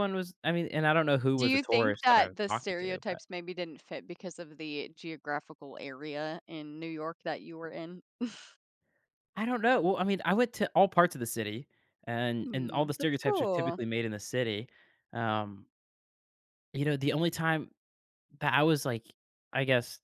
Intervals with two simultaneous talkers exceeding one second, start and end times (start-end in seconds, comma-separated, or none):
1.4-3.2, 12.4-13.8